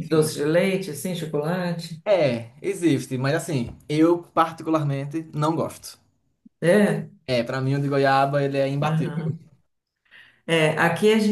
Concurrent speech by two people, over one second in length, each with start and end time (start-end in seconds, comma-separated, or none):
none